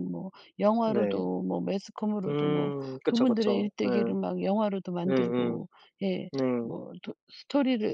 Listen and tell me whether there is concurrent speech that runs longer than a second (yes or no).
yes